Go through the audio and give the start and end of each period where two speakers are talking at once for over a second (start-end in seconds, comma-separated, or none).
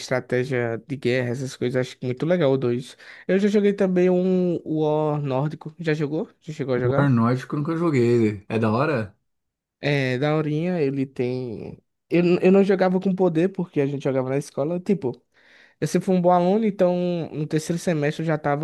none